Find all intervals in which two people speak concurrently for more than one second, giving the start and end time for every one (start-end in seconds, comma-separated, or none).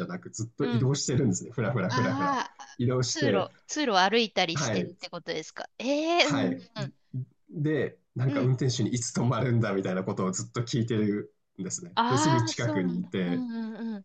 11.9-13.4